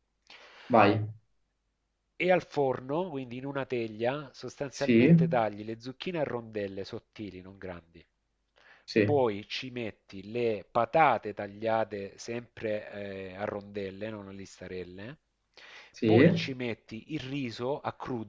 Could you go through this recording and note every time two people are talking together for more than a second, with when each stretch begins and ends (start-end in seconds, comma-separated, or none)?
none